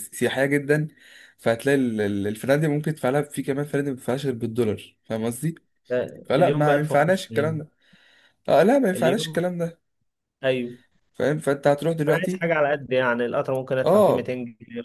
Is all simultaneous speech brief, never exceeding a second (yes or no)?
no